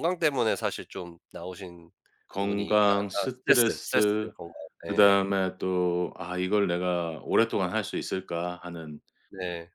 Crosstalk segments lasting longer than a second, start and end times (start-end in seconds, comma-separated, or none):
2.4-3.9